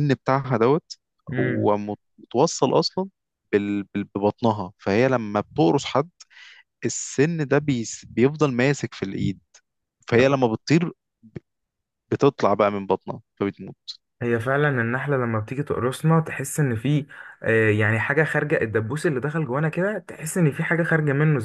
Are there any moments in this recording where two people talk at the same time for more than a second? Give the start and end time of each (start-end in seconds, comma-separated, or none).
none